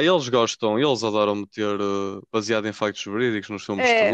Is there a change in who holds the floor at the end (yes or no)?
yes